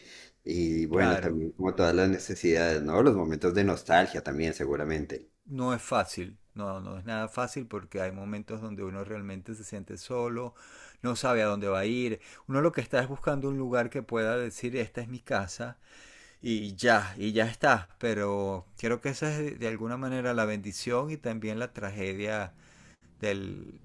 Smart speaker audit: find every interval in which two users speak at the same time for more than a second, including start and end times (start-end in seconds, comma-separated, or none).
none